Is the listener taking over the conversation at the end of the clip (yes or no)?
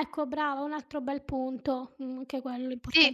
yes